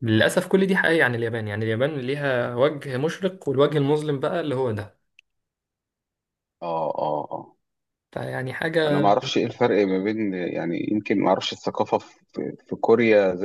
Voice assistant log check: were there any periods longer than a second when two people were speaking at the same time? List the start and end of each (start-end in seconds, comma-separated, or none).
none